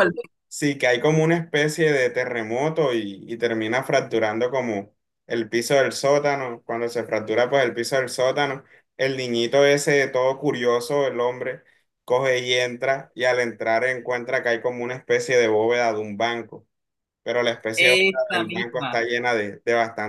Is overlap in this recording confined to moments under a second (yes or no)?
no